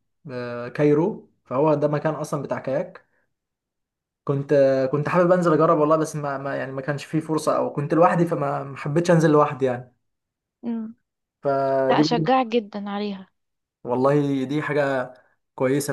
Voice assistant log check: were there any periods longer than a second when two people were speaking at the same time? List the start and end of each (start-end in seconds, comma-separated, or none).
none